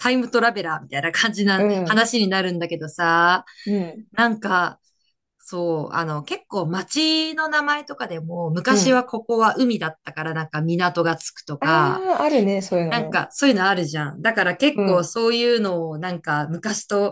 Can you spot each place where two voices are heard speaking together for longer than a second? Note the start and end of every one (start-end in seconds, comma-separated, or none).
none